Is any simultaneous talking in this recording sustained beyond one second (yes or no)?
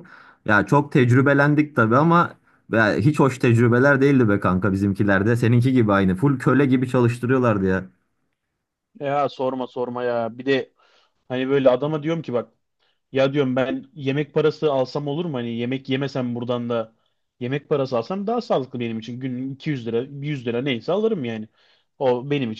no